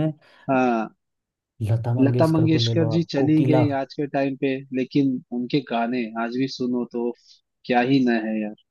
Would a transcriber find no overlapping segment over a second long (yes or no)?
no